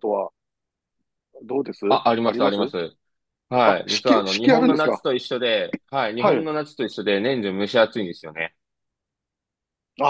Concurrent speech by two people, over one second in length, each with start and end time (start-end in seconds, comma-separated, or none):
3.6-5.0